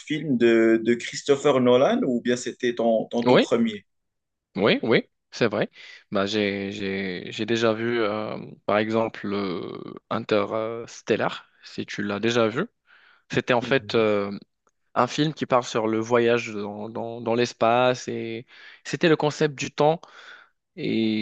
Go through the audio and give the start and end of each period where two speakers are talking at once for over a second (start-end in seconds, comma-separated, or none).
none